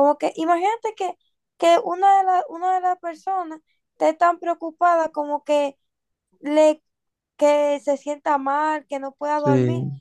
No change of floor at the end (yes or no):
yes